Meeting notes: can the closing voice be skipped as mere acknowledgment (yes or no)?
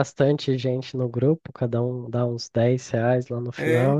yes